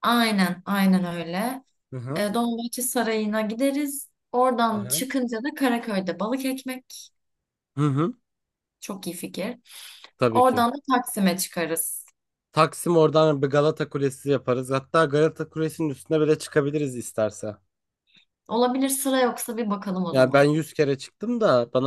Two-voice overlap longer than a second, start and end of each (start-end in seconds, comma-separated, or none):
none